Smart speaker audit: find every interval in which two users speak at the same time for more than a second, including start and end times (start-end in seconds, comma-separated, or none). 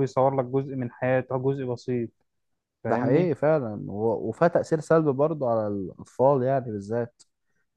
none